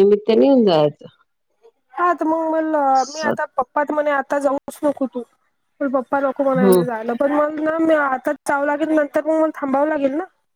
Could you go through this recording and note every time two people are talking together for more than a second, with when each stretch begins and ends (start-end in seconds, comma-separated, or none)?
none